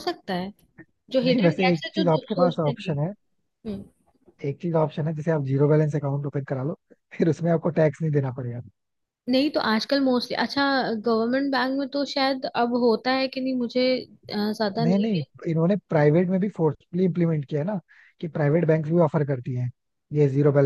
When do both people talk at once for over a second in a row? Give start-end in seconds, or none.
1.2-3.0